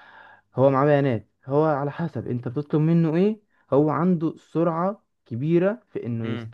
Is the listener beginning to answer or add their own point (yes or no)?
no